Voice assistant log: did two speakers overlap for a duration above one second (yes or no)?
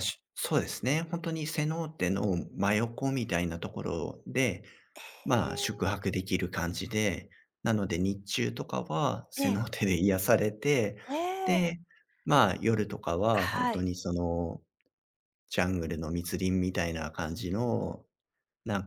no